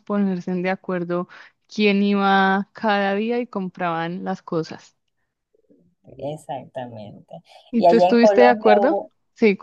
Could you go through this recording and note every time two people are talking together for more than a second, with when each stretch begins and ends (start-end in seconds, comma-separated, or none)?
7.7-9.0